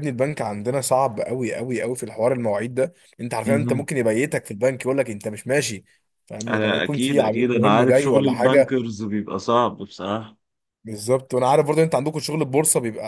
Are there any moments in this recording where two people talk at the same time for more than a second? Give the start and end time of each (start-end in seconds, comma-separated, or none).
6.5-8.7